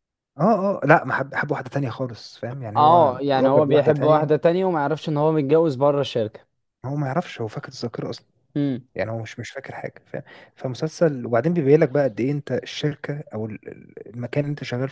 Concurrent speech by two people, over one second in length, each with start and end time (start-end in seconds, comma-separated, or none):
2.8-4.3